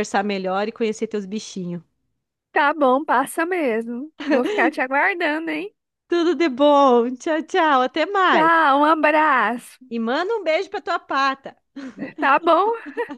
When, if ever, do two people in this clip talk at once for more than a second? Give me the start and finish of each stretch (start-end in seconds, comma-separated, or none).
none